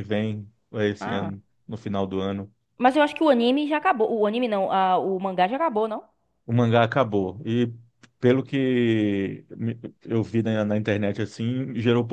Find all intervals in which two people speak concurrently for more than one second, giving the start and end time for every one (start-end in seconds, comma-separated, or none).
none